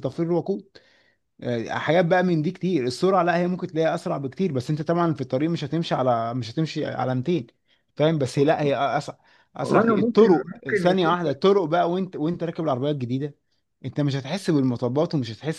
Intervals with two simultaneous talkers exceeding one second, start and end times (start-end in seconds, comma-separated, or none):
9.6-11.2